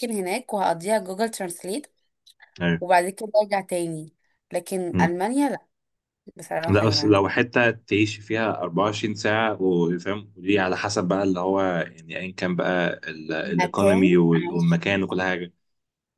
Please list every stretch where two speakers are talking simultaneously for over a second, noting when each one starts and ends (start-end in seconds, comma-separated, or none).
13.4-14.8